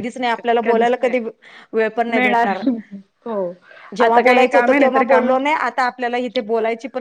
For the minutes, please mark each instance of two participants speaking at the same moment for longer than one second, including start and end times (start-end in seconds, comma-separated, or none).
4.1-5.6